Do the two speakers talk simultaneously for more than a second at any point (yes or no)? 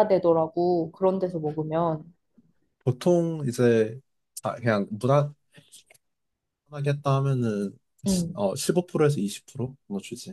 no